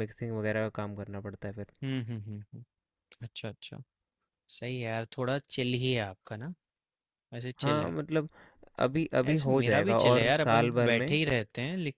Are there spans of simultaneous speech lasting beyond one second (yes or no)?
yes